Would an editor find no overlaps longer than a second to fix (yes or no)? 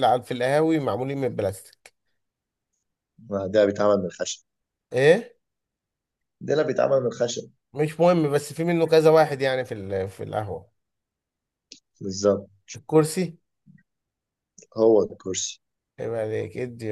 yes